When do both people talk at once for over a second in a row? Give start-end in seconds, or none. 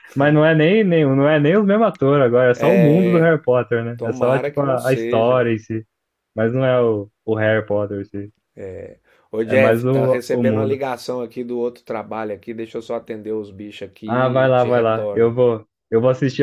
4.0-5.5, 9.5-10.8, 14.1-15.3